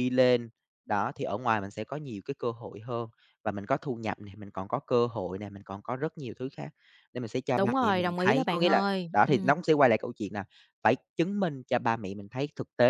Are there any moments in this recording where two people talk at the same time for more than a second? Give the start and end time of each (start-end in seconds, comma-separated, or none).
7.6-9.5